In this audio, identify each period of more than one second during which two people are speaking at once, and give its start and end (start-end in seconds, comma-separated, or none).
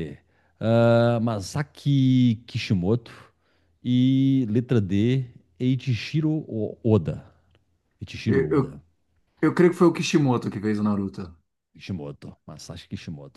none